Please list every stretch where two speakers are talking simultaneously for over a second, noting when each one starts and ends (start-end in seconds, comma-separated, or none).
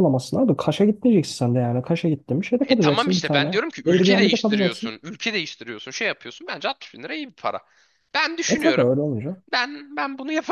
2.7-4.9